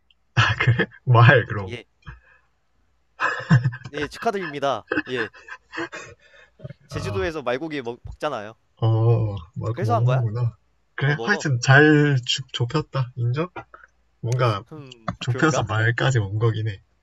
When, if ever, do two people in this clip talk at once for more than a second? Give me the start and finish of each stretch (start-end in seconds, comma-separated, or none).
none